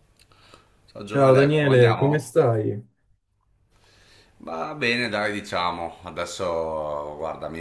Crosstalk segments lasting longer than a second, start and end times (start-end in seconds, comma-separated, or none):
1.0-2.4